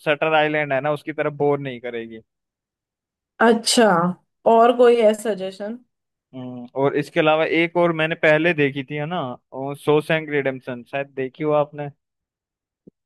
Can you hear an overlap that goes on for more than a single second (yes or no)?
no